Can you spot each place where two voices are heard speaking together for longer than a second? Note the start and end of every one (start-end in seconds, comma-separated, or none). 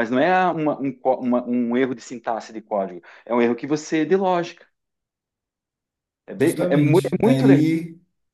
6.4-7.6